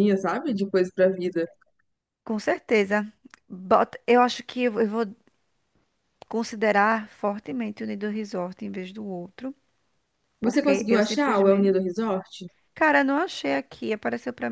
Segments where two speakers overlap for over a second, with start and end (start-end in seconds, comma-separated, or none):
10.4-11.8